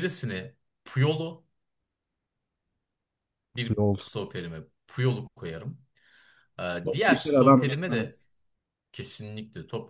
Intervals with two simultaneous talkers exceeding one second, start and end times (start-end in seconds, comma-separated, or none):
6.8-8.2